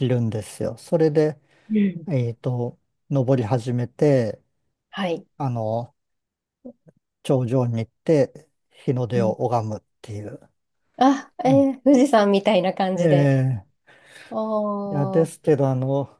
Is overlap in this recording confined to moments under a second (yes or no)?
yes